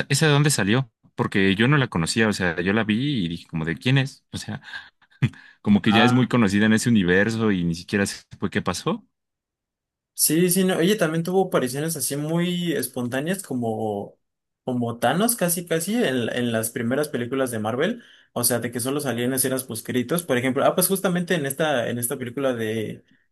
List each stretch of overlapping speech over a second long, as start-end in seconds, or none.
none